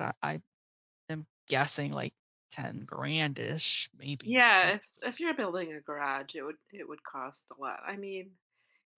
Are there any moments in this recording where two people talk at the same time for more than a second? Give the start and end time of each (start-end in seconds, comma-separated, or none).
none